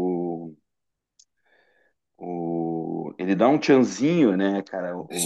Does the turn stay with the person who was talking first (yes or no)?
no